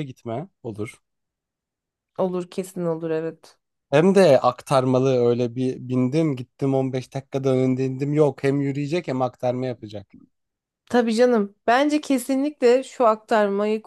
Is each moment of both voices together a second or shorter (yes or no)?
yes